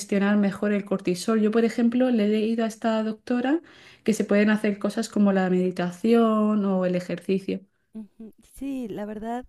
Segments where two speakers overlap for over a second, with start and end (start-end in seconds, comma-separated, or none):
none